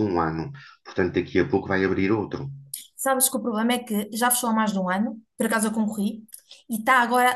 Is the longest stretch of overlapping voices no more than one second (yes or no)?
yes